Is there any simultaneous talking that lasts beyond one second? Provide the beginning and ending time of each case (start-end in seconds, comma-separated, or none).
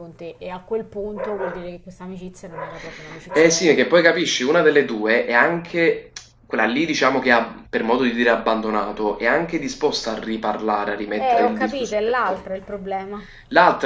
11.2-12.5